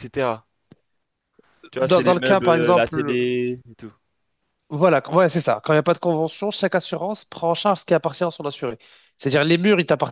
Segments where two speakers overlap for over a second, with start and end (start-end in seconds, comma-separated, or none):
1.8-3.4